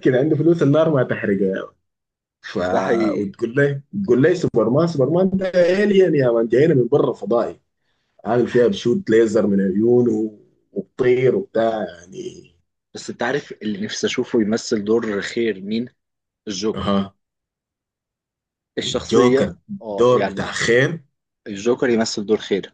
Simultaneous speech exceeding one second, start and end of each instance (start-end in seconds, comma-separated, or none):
18.8-20.5